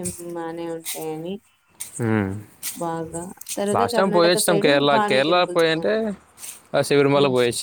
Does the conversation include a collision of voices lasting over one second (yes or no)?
yes